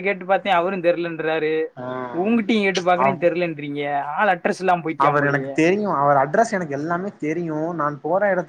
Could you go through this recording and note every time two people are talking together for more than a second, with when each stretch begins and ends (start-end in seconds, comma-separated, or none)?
none